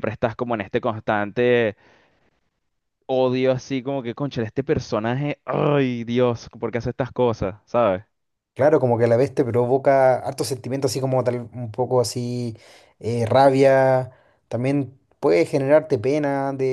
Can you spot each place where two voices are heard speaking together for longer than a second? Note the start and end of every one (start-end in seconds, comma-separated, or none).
none